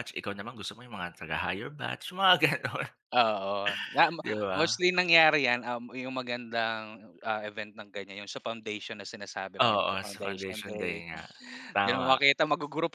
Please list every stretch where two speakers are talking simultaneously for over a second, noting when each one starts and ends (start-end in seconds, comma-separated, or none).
9.6-11.0